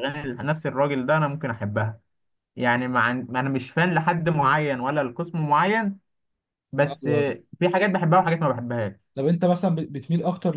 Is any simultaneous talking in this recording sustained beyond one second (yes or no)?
no